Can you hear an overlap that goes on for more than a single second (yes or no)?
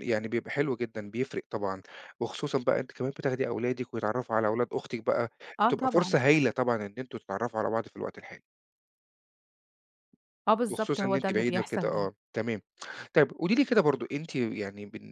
yes